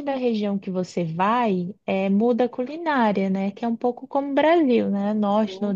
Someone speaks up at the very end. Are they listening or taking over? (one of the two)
listening